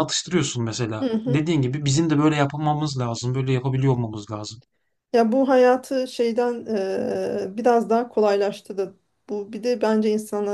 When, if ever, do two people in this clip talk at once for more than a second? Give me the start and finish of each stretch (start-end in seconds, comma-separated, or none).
none